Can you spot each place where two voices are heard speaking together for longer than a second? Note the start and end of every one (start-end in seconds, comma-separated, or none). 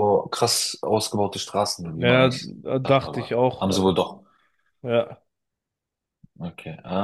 1.9-3.9